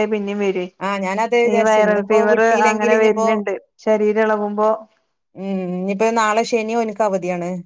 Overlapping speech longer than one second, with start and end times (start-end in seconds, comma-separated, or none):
1.5-3.3